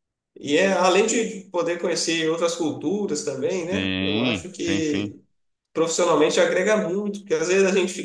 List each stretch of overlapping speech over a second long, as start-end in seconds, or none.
3.5-5.2